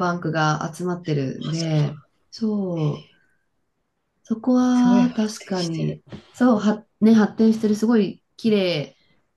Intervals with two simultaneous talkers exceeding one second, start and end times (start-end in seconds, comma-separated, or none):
4.7-6.0